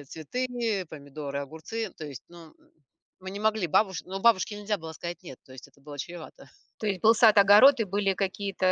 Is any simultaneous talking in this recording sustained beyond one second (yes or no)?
no